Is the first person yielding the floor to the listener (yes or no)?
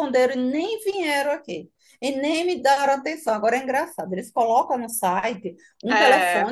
no